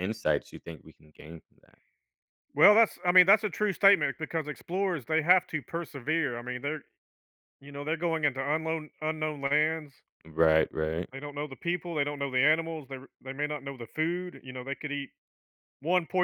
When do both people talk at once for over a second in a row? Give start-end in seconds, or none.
none